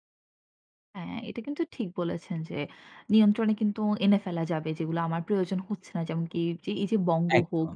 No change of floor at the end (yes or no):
yes